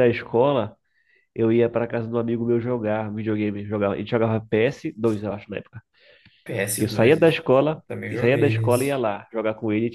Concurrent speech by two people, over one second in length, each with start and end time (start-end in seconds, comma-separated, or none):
6.8-9.0